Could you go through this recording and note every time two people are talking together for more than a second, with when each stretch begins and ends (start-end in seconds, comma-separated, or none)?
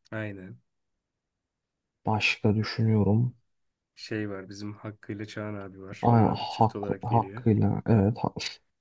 6.0-7.4